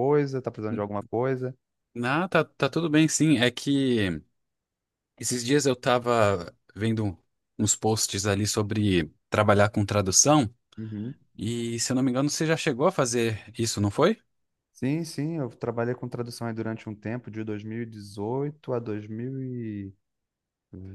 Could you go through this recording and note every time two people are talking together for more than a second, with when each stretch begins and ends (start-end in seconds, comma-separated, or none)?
none